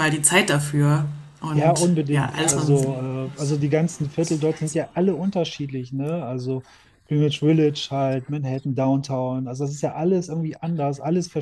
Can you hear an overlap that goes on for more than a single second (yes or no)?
yes